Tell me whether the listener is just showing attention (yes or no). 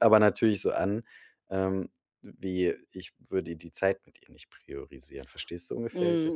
no